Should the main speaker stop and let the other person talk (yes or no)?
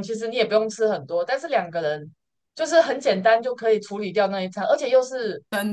no